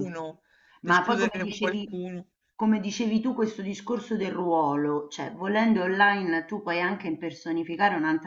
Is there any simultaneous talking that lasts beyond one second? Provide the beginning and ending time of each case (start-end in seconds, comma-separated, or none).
0.8-2.0